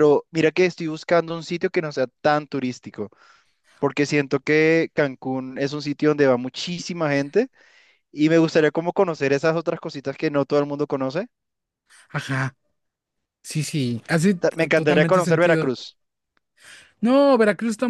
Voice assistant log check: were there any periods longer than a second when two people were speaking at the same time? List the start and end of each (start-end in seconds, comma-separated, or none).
14.4-15.7